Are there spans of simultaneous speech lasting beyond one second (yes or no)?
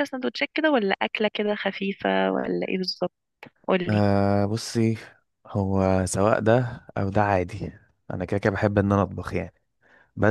no